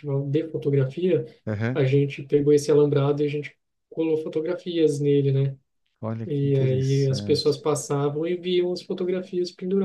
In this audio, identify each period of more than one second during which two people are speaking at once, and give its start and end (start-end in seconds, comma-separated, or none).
6.2-7.6